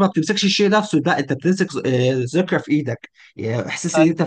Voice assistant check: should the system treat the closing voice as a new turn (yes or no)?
no